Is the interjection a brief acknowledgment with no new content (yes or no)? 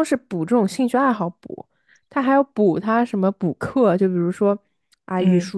yes